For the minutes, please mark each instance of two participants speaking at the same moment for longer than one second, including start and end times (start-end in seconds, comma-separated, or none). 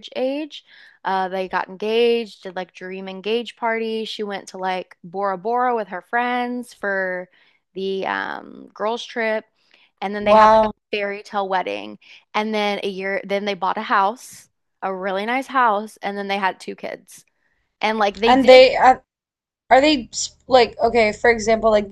none